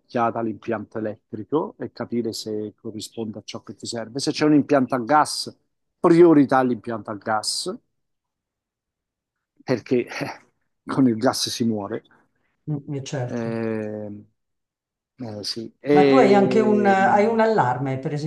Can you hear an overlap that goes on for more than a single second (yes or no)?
yes